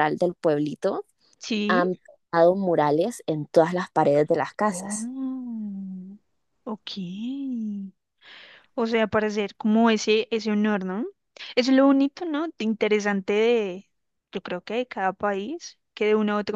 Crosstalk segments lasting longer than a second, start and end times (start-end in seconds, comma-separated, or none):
none